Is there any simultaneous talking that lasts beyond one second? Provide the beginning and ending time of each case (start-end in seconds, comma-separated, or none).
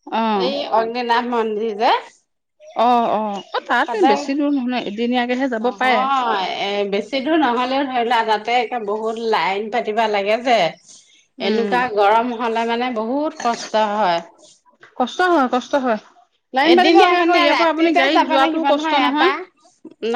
16.7-18.9